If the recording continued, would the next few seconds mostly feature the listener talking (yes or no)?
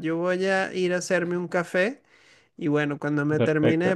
no